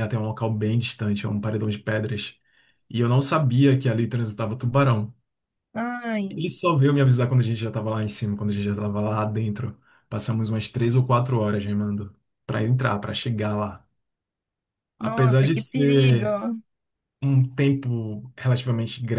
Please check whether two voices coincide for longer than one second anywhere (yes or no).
yes